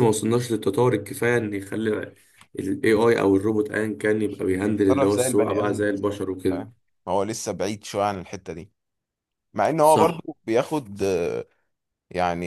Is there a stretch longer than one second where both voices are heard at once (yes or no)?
yes